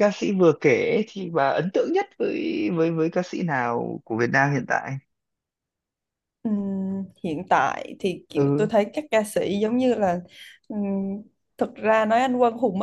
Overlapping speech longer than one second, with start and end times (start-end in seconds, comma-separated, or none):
none